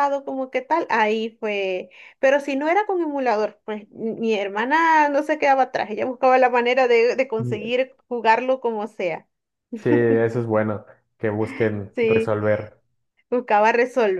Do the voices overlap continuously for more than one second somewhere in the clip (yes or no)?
no